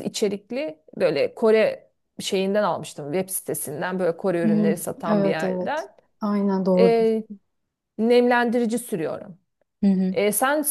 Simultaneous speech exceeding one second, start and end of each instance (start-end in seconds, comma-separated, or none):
4.4-5.9